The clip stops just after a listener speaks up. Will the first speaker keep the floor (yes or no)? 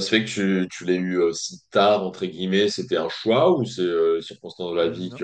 yes